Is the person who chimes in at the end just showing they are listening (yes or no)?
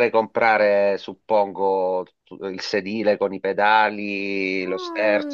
no